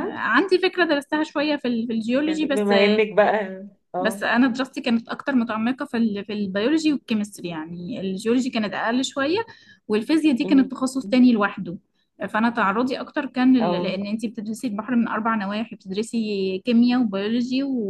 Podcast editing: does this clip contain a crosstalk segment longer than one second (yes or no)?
no